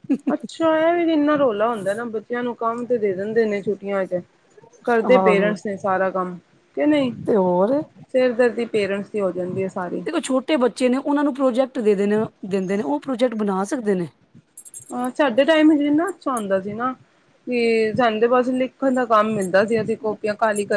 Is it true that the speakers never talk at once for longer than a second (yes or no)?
yes